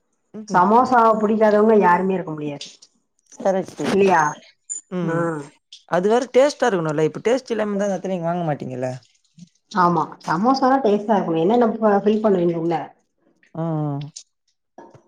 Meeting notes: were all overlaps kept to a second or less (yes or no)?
yes